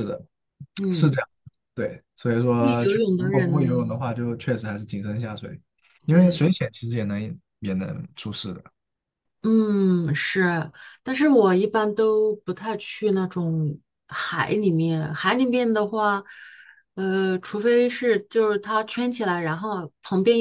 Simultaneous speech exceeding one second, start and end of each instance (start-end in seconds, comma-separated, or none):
2.6-4.1